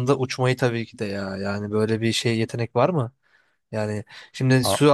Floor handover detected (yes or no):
no